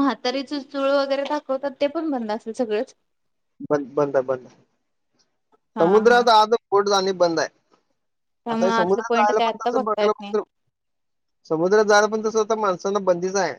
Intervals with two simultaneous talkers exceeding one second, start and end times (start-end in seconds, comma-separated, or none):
8.5-10.3